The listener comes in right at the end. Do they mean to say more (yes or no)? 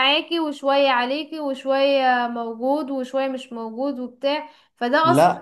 no